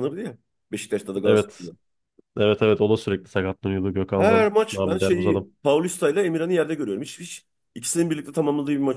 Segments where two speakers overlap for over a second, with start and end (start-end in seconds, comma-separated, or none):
4.2-5.5